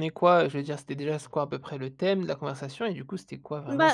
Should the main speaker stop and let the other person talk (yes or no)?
yes